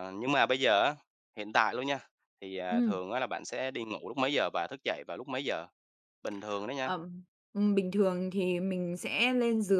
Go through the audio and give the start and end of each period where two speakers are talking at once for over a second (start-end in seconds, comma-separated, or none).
none